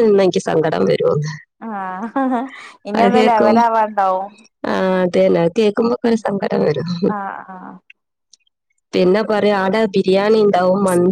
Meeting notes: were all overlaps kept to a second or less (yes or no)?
yes